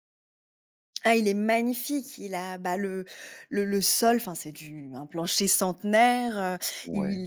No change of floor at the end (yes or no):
yes